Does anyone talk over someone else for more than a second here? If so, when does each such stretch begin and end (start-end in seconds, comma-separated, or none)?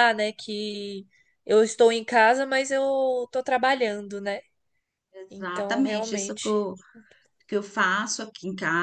5.3-6.5